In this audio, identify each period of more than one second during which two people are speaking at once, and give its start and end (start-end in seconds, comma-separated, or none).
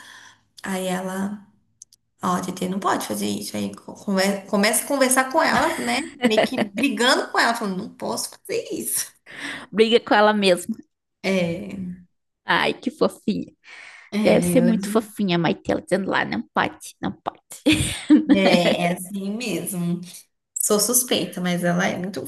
none